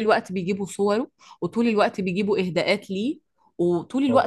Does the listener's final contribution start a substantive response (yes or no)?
no